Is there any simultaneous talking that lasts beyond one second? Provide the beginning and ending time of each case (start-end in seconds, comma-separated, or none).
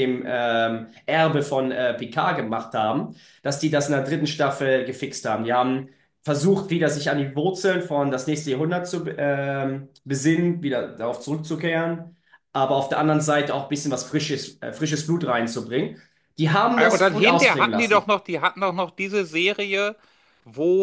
16.8-18.1